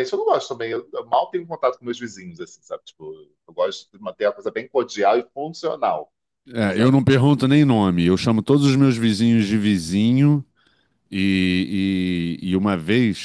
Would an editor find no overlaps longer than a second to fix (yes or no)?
yes